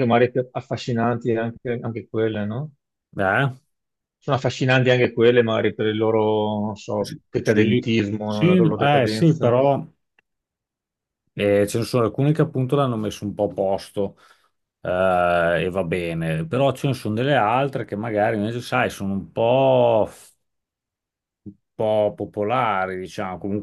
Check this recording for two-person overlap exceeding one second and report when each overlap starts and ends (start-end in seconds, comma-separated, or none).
7.0-9.6